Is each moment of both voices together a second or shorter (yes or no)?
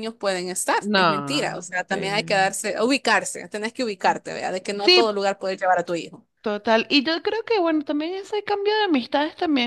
no